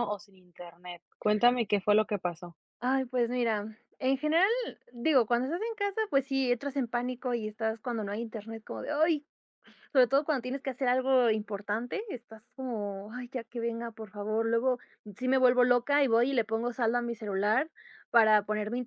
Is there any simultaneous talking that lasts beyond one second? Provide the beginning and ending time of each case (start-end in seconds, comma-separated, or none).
none